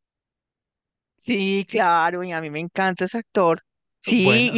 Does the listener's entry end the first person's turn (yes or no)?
no